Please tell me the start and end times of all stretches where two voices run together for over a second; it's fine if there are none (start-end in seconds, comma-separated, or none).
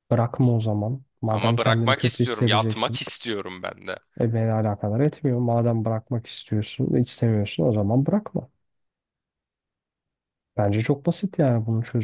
1.3-3.0